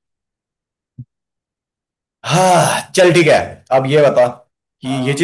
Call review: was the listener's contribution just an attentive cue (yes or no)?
yes